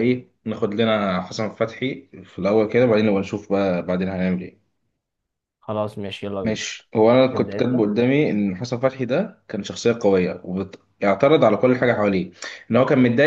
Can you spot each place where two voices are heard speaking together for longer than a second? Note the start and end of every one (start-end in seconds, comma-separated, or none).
none